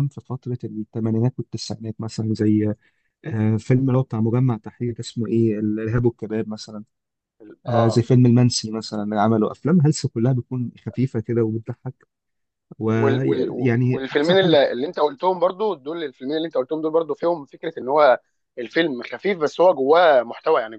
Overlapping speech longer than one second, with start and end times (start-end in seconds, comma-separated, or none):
12.9-14.6